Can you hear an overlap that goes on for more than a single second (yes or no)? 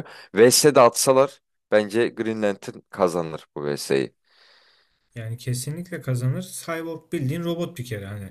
no